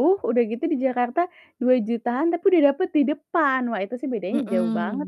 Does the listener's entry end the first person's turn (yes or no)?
yes